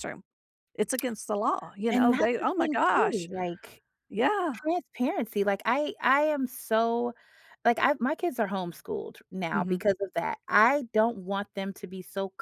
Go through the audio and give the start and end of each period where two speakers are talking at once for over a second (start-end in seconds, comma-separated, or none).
1.9-3.3